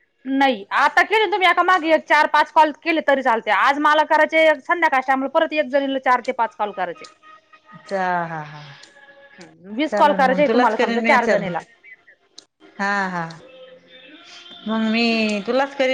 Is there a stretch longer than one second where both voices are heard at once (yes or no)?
yes